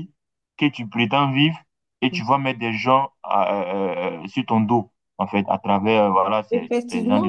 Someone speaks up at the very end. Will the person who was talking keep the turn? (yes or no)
no